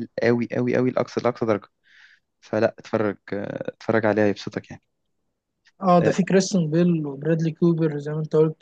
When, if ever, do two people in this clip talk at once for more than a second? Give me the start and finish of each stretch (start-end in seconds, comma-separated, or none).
none